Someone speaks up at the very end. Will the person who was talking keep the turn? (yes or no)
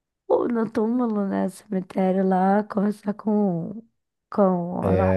yes